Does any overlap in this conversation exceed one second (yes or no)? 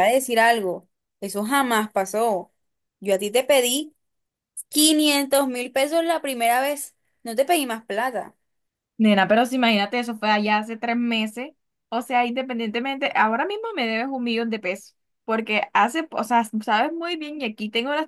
no